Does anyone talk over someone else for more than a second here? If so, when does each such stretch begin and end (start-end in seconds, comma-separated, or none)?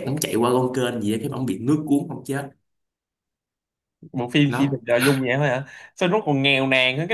none